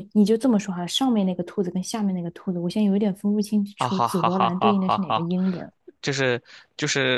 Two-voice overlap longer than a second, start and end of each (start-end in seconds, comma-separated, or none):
3.8-5.3